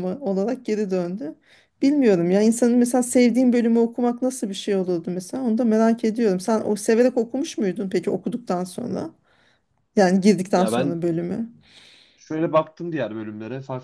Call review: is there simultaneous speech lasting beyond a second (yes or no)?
no